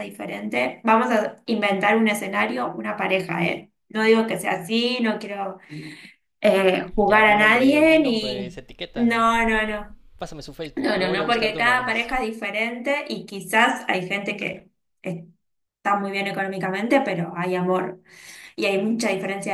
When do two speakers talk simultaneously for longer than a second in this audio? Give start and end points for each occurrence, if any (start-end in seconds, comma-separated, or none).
7.1-9.0, 10.8-12.1